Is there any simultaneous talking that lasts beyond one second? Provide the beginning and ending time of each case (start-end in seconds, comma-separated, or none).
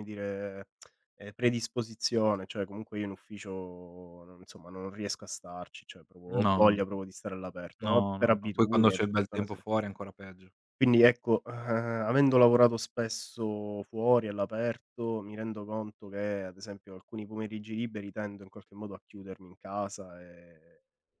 7.8-9.6